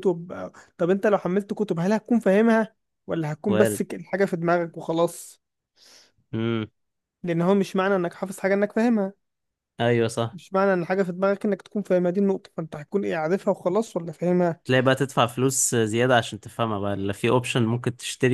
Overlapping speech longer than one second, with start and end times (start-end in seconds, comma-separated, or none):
none